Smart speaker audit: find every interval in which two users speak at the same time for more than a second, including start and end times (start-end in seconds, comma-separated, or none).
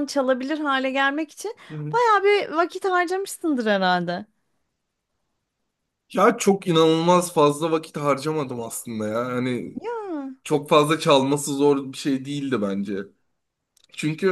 none